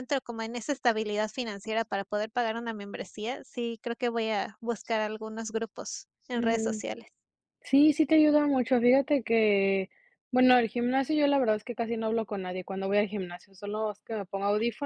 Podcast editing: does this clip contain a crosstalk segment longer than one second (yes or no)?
no